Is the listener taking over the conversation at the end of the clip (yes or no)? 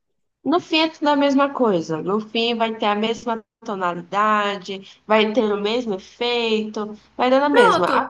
no